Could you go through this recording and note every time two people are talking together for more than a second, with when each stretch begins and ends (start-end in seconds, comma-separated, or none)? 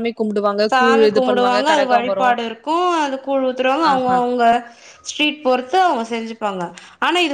0.7-2.4